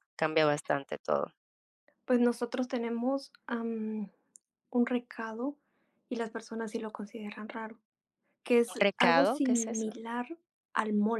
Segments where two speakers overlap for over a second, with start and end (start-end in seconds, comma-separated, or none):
8.7-10.0